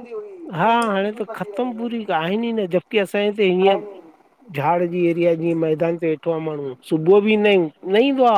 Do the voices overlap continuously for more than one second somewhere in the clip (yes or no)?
yes